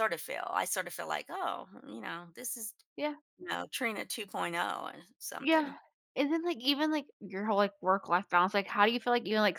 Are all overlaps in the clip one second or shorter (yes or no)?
yes